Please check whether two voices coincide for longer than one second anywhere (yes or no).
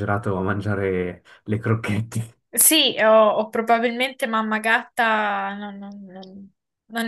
no